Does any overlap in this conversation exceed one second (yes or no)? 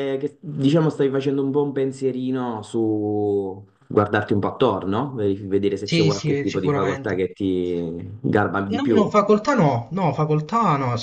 yes